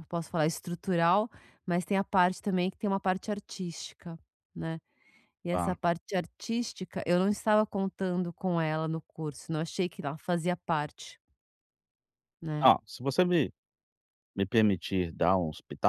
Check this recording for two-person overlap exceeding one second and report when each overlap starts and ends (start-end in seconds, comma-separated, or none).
none